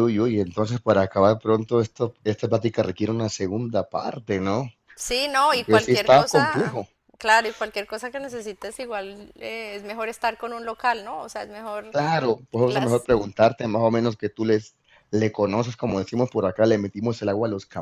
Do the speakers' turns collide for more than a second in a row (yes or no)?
yes